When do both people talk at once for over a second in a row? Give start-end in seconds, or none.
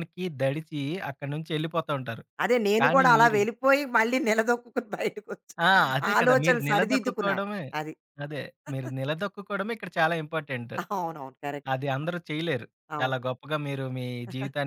6.2-7.4